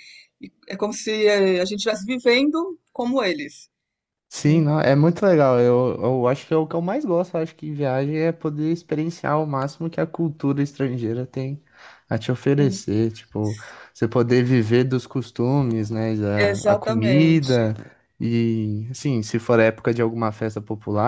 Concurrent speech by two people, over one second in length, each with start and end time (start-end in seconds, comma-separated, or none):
16.4-17.7